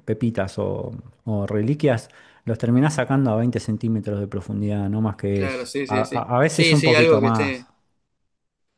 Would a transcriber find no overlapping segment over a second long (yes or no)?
no